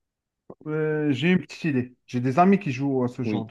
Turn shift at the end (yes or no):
yes